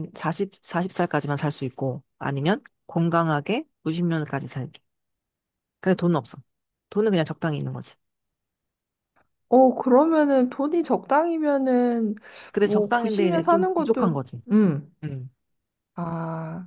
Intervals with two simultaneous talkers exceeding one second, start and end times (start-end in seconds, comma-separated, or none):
12.6-14.1